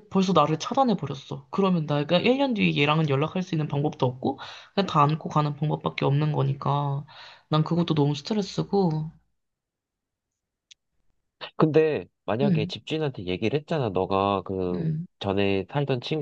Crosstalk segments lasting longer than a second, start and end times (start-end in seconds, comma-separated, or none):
none